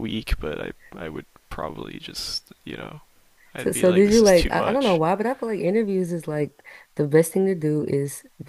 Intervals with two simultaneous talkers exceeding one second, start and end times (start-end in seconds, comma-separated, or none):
3.6-5.0